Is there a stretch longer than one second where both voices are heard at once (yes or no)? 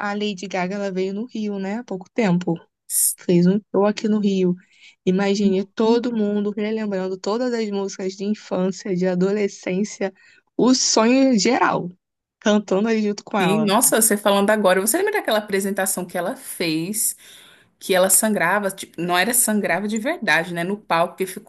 no